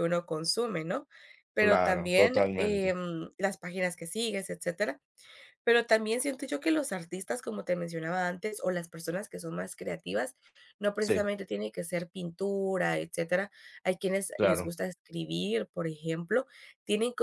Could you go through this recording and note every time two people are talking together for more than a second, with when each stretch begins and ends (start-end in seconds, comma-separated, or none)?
1.6-2.9